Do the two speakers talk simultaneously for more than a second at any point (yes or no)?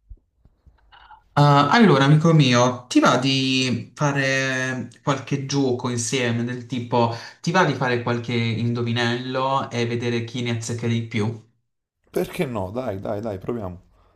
no